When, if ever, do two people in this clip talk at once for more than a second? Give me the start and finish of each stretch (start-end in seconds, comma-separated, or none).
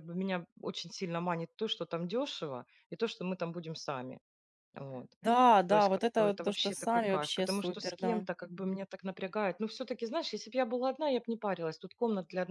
5.7-8.2